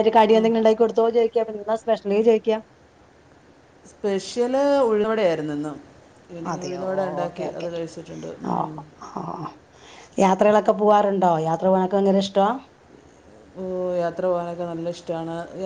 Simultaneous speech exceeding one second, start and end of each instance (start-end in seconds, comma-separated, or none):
none